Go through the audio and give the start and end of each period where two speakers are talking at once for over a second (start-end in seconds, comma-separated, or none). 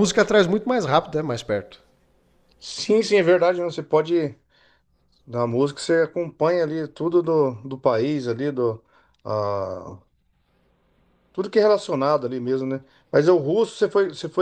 none